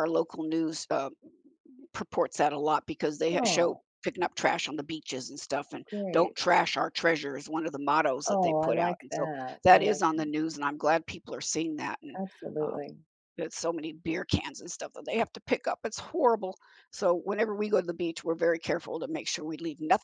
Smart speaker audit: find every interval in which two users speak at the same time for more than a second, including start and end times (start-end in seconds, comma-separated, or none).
8.3-10.0